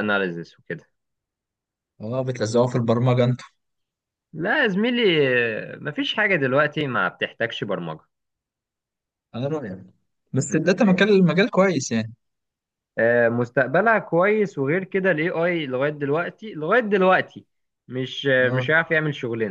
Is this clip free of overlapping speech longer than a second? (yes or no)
yes